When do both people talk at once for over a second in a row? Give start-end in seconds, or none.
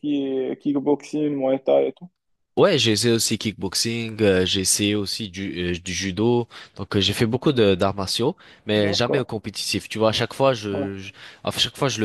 none